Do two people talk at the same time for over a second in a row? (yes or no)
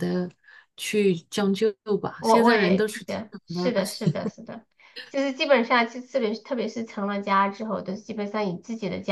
yes